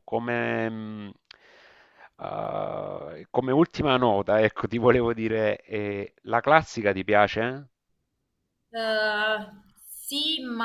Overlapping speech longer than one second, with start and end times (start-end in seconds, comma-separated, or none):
none